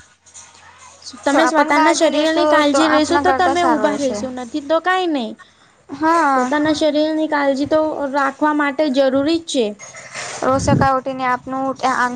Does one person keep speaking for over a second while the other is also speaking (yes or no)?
yes